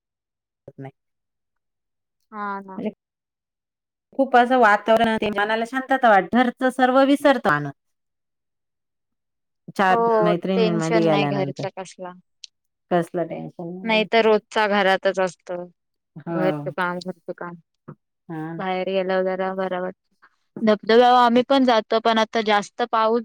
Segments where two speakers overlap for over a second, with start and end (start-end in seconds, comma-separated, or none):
10.2-11.6